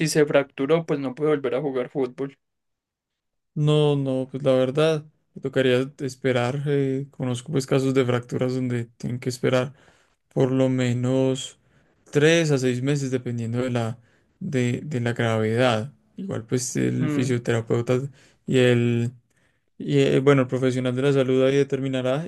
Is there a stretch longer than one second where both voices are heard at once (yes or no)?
no